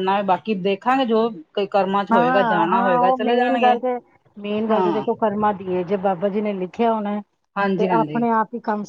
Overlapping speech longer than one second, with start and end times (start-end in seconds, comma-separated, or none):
2.1-3.7